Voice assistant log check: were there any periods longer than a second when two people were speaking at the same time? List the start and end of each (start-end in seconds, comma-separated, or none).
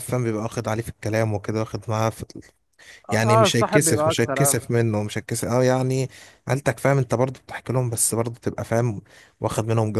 3.1-4.6